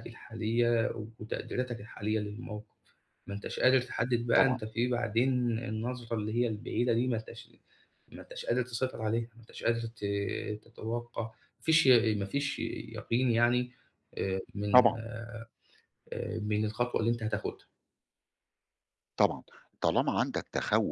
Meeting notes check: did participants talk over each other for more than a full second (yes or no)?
no